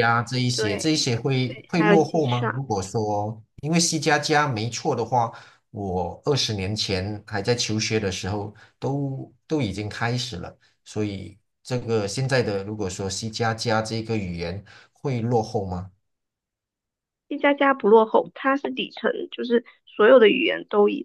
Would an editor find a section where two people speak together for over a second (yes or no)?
yes